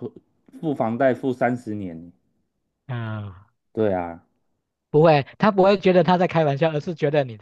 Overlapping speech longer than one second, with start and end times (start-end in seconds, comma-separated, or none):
none